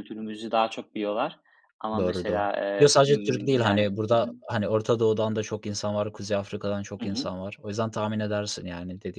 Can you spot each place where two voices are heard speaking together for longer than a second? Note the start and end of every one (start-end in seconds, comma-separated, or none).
2.0-4.3